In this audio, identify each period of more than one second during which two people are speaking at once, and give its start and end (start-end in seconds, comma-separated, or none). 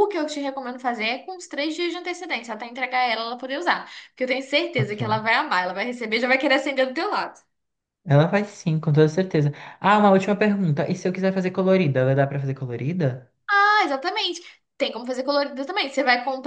none